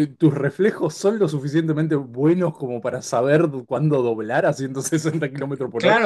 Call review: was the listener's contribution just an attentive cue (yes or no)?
no